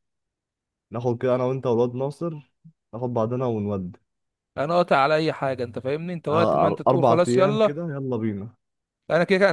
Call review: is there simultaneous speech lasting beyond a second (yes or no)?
yes